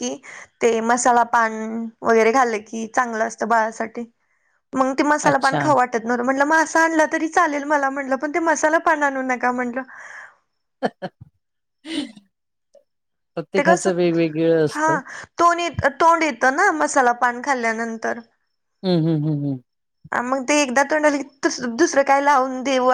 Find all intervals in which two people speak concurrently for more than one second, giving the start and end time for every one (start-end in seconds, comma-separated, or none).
none